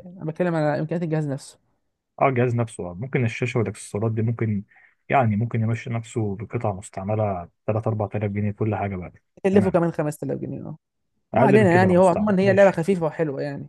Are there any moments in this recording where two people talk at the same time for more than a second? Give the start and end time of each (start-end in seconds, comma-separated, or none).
11.3-12.8